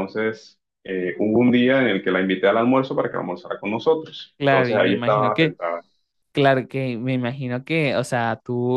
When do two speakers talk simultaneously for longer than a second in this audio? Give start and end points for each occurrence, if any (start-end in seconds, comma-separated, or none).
4.4-5.6